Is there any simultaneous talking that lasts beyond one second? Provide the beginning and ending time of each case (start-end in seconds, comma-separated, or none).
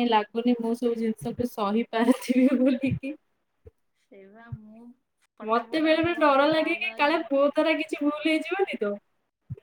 5.5-7.2